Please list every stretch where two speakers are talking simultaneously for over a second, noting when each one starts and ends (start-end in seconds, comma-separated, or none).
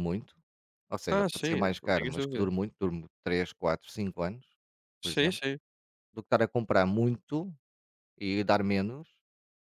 1.1-2.5